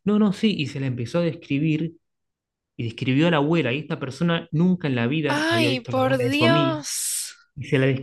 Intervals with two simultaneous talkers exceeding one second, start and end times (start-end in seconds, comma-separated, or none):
5.3-6.8